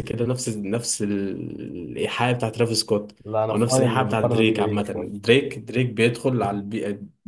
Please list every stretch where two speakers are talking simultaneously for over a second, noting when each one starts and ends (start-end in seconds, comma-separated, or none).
3.5-5.1